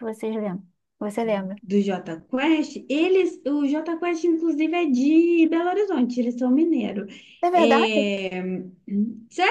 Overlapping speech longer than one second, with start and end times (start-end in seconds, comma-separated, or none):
none